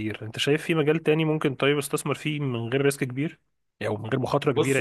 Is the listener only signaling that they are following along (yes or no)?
no